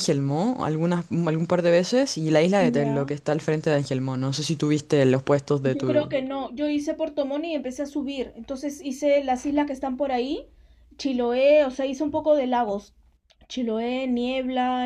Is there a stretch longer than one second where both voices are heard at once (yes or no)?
no